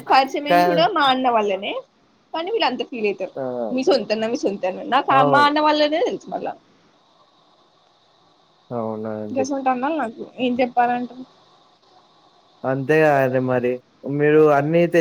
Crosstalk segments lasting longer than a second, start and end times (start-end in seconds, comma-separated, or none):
none